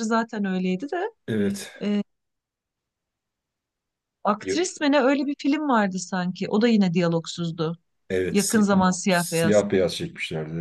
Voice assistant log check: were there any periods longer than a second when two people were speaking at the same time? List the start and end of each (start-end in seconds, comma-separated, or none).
8.3-9.6